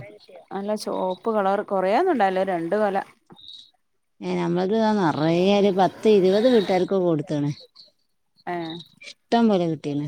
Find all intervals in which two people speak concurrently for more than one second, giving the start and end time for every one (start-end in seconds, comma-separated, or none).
none